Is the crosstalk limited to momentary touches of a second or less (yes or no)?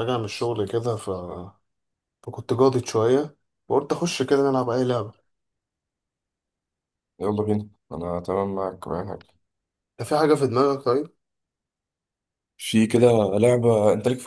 yes